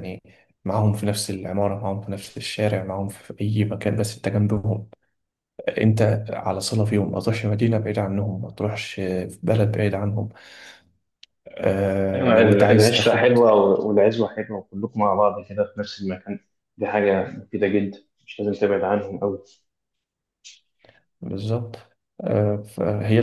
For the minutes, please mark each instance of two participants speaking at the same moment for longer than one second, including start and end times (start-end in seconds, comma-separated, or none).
12.1-13.4